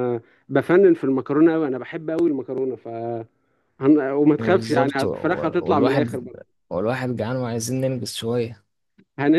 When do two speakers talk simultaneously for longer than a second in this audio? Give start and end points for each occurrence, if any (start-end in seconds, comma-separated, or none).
4.4-6.2